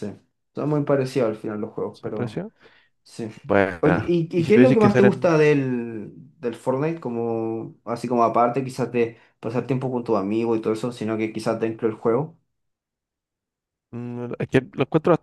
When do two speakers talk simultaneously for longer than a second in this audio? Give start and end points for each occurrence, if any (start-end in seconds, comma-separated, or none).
3.8-5.3